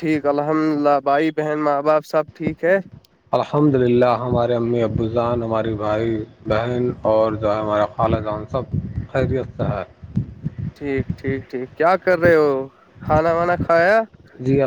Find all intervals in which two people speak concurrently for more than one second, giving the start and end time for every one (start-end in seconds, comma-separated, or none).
none